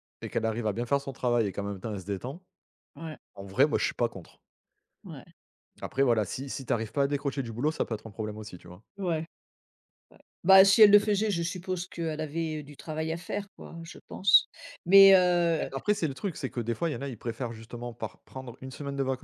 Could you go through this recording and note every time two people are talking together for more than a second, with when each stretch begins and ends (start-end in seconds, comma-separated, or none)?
none